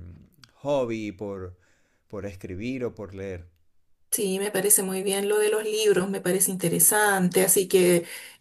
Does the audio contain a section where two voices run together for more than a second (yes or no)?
no